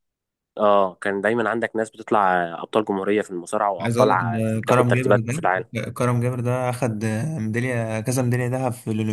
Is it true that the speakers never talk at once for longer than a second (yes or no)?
no